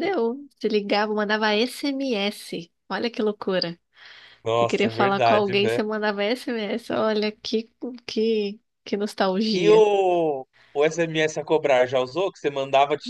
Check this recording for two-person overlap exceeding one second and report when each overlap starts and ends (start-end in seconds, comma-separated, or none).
4.5-5.8